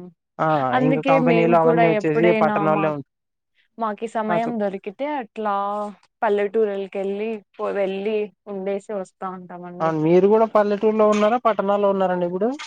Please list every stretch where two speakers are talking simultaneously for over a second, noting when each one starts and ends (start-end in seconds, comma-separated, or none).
0.9-3.0